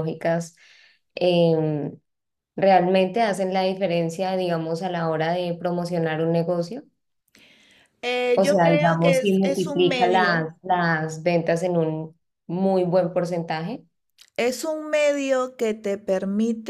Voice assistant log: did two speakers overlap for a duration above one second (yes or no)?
yes